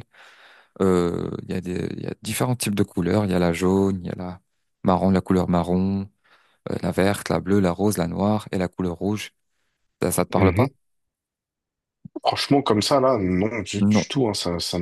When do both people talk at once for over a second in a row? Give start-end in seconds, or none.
none